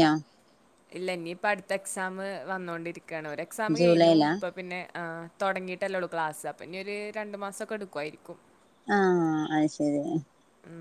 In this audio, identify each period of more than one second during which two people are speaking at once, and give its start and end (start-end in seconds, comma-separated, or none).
none